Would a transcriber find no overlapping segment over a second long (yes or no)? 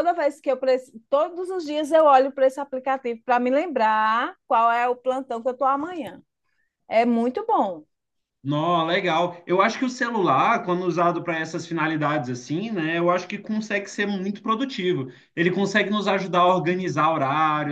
yes